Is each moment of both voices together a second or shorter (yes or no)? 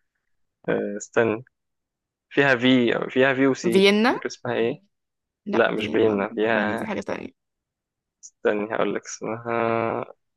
no